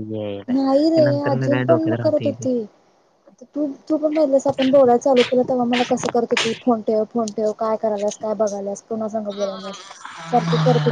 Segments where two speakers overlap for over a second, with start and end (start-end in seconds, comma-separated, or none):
0.5-2.4